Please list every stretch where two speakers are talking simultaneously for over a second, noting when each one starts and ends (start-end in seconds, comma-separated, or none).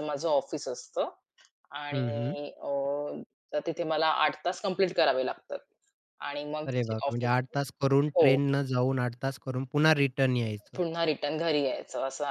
none